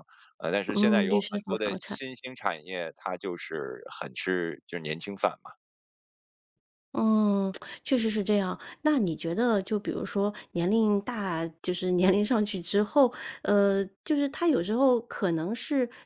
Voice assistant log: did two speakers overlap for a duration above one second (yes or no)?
yes